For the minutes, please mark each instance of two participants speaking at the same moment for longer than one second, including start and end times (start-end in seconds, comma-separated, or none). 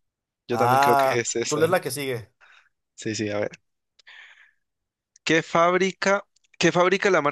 0.5-1.8